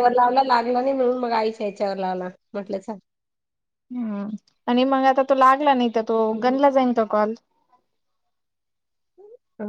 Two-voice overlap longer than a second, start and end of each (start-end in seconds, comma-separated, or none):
none